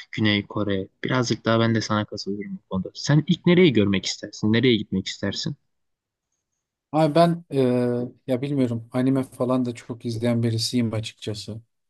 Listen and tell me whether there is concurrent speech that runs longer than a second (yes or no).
no